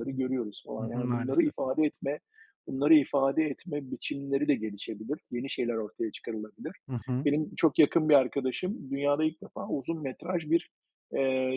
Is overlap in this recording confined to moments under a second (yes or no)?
no